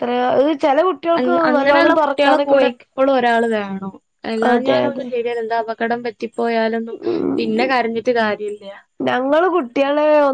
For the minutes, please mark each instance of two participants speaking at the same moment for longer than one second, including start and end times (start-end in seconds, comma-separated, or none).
1.2-2.9